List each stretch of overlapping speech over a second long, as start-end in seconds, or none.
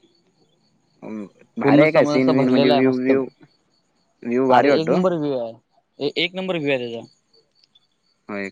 1.6-3.1